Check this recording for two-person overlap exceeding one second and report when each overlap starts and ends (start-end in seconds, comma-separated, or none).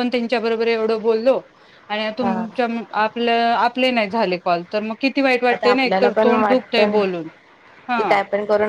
5.5-7.0